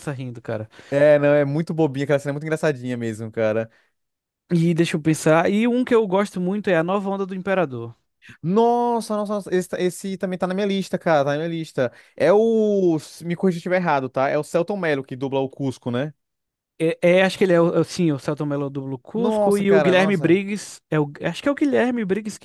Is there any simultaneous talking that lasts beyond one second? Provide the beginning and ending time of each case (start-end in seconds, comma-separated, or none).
19.1-20.4